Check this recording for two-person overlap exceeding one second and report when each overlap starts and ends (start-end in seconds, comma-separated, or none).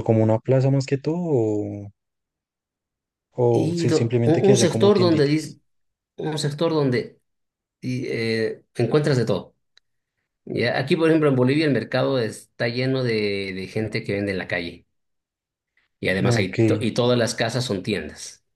3.5-5.6